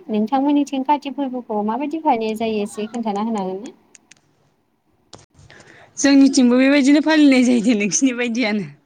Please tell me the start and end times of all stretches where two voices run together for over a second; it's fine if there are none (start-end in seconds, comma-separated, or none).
none